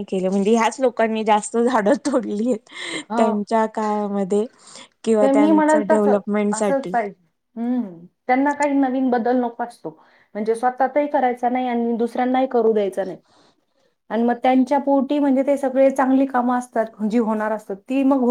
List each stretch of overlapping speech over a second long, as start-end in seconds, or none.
5.2-7.0